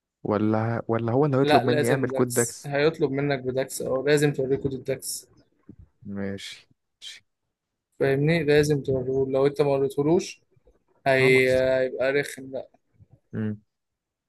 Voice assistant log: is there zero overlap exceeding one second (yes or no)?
no